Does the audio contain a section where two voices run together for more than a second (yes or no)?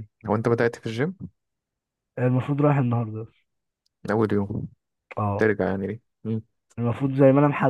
no